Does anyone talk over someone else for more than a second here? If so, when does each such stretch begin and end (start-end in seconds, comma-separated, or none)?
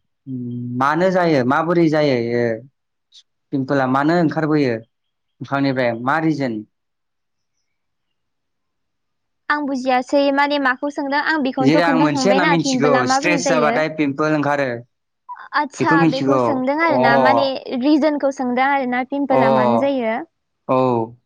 11.7-13.7